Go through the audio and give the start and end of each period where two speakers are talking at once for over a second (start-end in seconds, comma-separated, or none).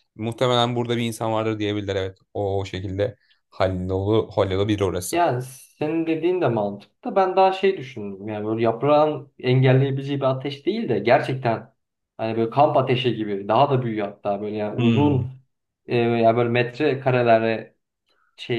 none